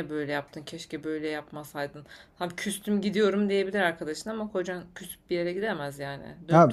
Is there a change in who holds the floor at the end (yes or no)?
yes